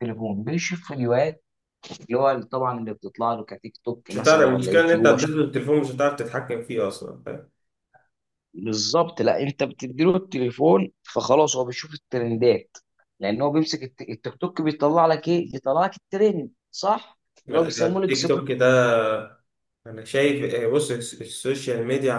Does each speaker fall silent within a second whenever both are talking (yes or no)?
no